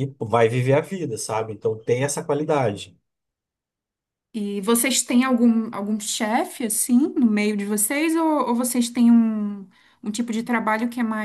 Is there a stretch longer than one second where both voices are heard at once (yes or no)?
no